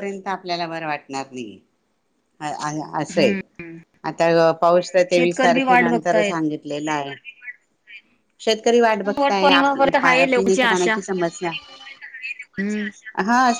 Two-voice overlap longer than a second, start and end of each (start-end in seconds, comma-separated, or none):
5.2-6.4, 9.2-10.9